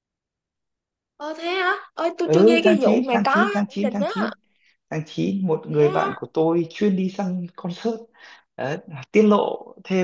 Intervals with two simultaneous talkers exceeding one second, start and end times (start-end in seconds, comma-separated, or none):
2.2-4.1